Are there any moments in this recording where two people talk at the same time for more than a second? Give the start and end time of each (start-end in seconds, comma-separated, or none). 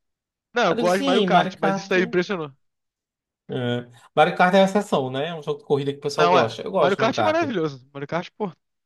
0.7-1.9, 6.2-7.4